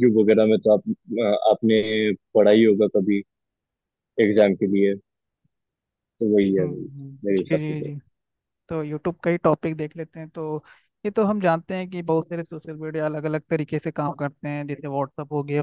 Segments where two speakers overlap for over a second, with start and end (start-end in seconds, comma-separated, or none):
6.6-7.9